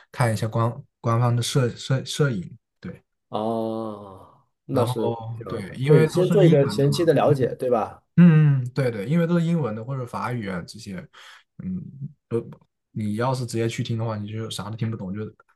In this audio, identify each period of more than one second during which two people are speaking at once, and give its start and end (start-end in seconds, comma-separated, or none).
4.7-7.3